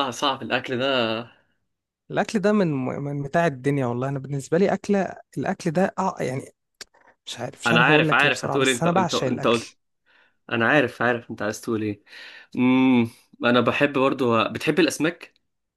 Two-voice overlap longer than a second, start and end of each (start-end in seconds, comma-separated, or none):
7.7-9.7